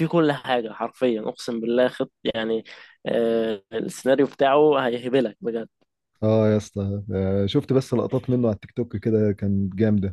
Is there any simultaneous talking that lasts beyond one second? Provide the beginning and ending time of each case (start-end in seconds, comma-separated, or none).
none